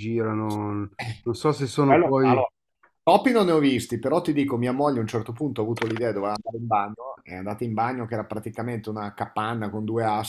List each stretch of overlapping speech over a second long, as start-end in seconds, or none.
none